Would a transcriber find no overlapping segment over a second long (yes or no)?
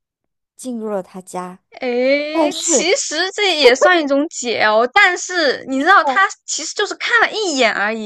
yes